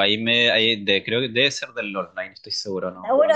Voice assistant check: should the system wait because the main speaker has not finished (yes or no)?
no